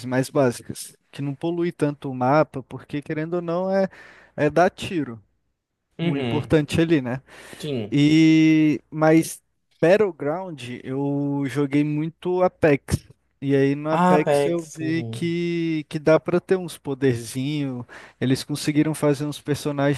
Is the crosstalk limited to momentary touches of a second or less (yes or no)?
no